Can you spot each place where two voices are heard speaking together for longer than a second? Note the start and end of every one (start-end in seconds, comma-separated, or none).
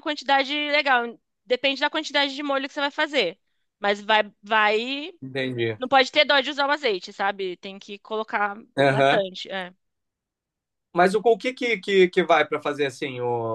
none